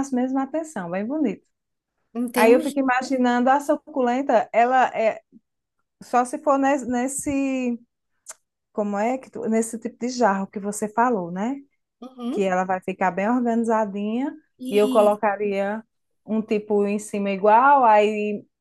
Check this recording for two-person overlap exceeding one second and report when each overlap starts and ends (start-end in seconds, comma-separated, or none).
none